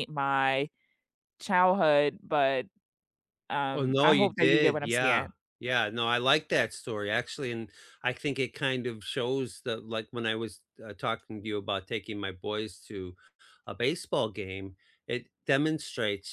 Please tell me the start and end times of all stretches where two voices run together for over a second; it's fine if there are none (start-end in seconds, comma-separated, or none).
3.7-5.3